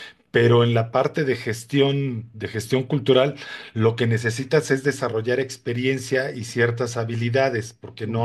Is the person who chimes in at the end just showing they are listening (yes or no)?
no